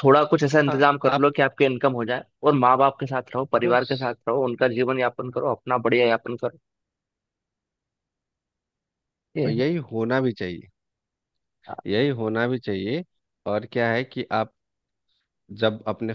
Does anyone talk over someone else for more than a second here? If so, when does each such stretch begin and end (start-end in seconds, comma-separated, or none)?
none